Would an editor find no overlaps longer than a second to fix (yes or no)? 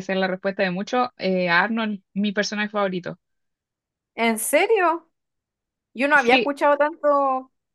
yes